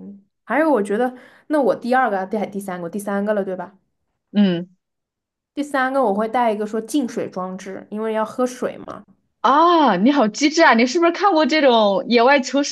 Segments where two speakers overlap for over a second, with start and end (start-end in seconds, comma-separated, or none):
none